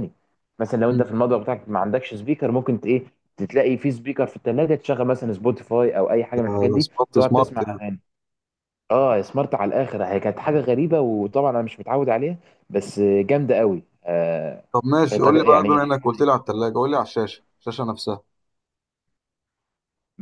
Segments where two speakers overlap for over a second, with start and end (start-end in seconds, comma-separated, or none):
6.5-7.8